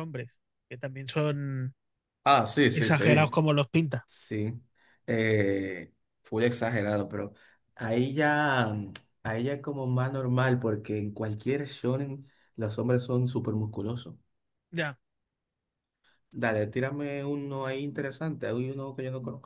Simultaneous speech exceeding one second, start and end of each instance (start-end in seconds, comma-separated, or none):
none